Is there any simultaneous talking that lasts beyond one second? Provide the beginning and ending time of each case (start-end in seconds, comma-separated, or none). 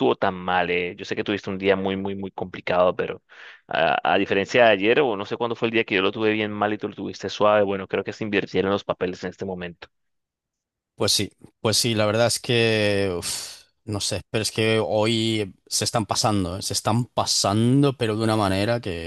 none